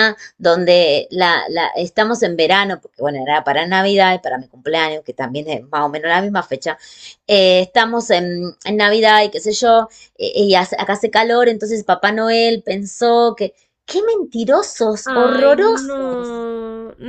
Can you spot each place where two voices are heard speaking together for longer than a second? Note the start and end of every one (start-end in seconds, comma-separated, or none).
15.0-16.5